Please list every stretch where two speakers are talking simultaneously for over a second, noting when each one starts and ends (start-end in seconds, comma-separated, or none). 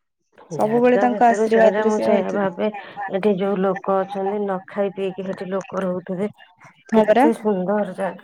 0.6-2.5